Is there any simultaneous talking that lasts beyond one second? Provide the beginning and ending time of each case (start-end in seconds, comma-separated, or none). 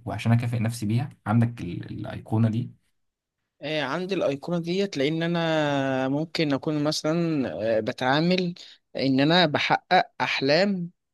none